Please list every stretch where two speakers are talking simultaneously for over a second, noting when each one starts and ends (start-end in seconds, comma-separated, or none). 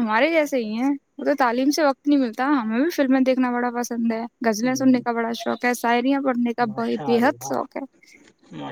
none